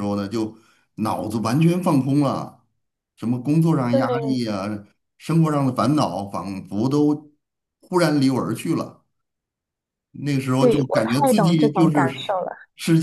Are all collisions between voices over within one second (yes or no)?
no